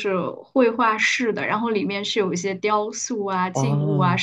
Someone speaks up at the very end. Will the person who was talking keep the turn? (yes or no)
yes